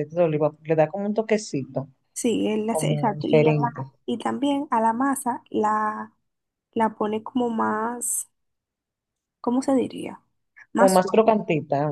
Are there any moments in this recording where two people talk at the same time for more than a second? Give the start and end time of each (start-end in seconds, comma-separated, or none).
2.7-3.9